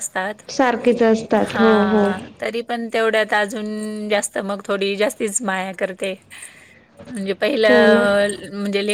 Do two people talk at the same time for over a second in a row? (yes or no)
no